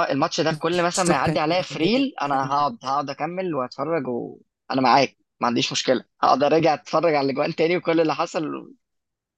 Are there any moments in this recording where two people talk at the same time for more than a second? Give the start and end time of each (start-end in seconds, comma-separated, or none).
0.5-2.1